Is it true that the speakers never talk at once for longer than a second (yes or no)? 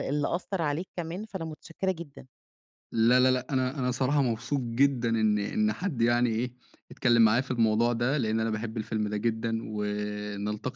yes